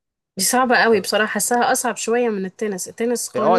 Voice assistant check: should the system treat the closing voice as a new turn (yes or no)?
yes